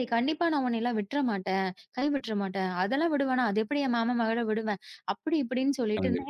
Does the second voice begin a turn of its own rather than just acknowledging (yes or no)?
no